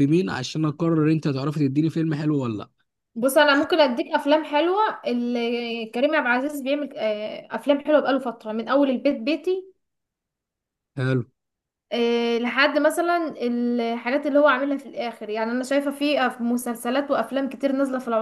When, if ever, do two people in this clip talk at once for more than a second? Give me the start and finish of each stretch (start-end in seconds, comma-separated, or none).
none